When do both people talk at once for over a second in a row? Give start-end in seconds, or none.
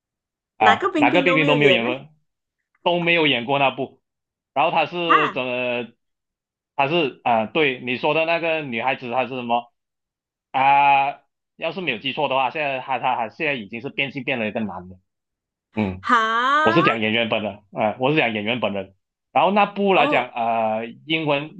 0.6-1.9